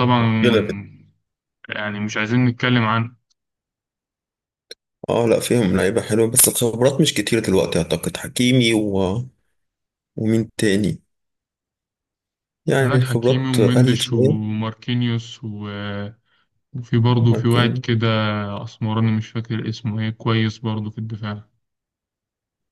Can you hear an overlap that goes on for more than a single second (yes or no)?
yes